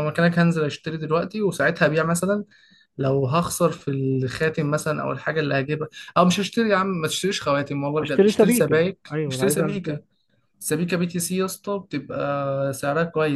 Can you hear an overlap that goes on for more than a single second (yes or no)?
yes